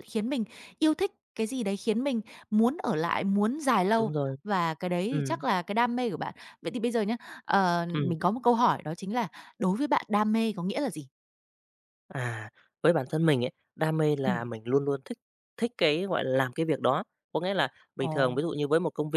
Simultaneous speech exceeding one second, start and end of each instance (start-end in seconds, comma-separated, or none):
none